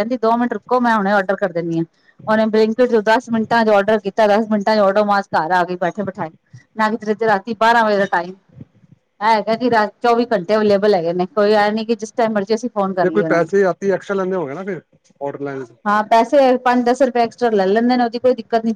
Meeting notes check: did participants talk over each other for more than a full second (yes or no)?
no